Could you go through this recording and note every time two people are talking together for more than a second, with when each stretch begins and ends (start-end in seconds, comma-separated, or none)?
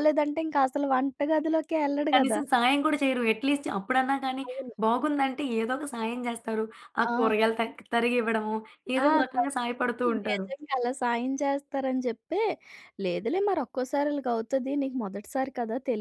none